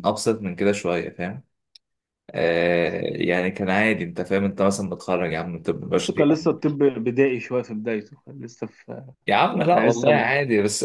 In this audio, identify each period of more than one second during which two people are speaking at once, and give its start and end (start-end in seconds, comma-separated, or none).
none